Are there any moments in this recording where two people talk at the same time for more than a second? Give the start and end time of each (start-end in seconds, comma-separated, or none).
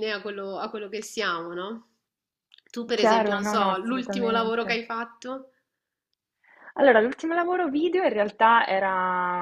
3.0-4.8